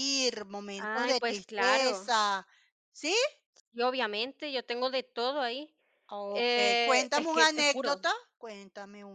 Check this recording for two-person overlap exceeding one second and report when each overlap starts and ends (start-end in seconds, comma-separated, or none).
0.8-2.1, 6.3-8.0